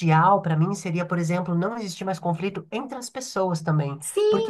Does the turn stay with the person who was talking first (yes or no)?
no